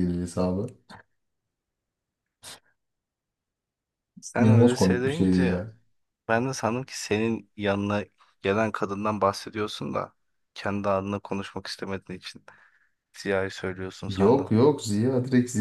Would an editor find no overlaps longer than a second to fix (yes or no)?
no